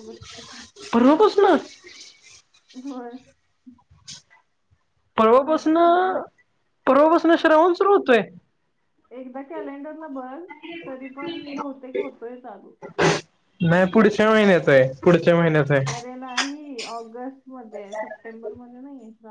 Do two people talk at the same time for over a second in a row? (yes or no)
no